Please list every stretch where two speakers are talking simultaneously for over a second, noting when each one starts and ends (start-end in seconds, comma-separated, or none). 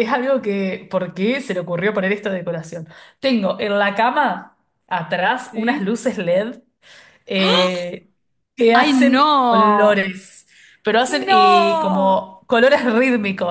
8.7-10.1, 11.1-12.3